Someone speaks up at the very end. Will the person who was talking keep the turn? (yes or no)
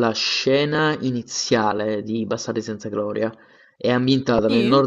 yes